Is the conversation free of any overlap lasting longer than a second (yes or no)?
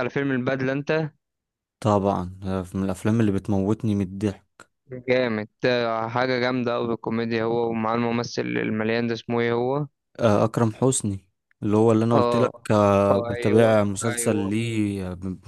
no